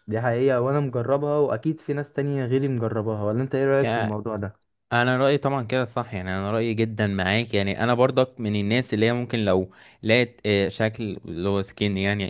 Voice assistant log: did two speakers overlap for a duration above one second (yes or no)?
no